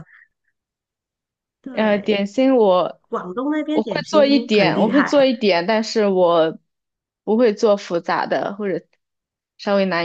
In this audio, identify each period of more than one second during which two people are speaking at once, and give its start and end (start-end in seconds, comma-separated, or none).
3.7-5.1